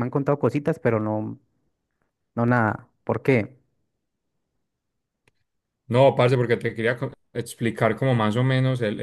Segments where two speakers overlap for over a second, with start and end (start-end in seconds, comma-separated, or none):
none